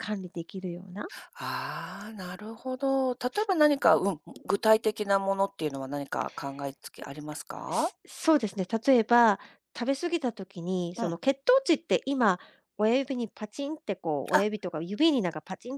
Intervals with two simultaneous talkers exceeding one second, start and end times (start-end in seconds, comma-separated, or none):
none